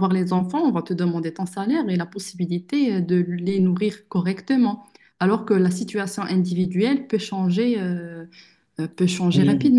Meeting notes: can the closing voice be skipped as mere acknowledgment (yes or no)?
no